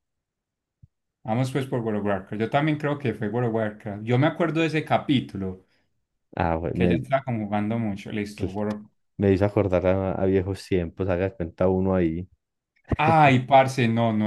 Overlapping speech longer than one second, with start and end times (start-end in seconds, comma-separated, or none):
none